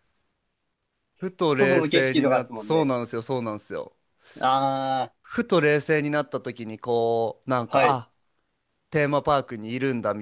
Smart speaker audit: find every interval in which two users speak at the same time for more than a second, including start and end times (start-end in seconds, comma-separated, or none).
1.5-2.9